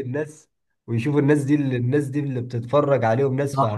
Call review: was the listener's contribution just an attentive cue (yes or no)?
no